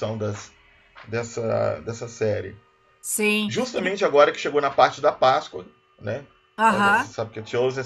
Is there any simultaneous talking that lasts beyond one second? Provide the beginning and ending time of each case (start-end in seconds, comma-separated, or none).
none